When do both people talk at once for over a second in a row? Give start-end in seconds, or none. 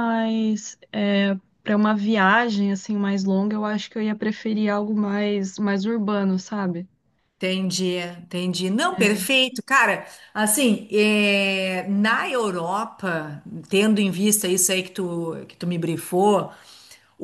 none